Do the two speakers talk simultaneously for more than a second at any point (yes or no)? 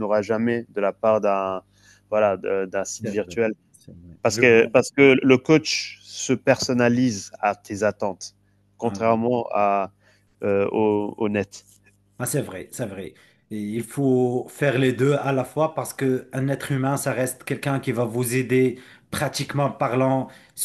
no